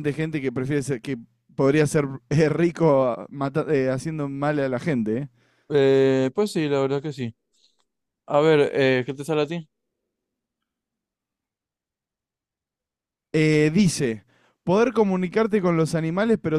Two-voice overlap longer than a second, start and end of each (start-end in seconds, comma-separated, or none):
none